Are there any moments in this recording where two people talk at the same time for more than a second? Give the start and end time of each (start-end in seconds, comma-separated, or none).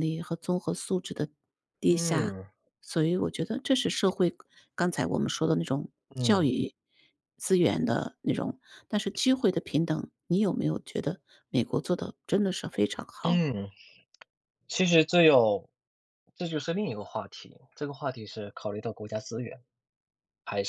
none